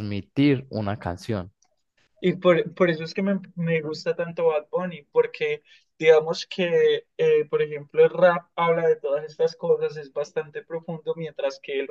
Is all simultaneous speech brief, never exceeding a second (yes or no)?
yes